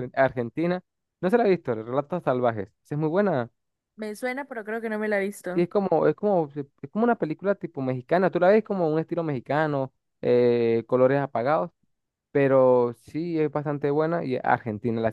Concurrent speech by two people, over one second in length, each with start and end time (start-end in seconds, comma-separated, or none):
none